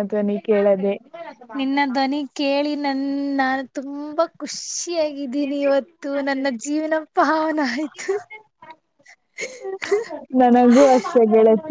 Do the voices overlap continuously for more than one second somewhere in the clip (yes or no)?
no